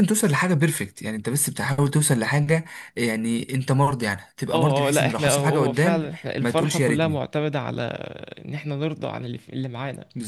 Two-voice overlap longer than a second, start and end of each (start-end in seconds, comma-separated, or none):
4.5-7.2